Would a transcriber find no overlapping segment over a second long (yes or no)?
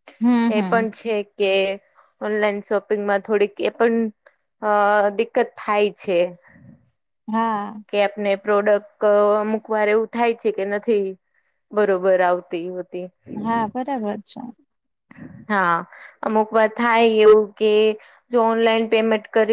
yes